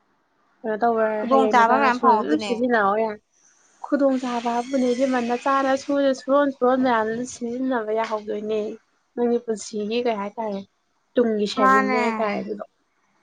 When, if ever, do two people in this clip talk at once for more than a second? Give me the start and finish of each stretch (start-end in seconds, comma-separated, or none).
1.2-2.5